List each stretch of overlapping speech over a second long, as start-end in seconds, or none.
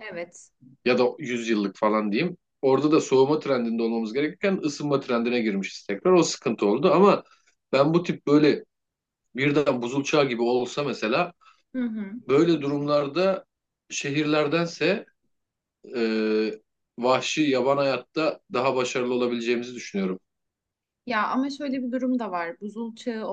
none